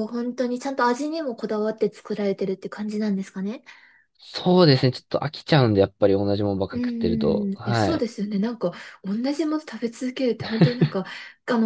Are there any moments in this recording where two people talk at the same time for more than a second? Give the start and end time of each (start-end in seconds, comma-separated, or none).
6.7-8.1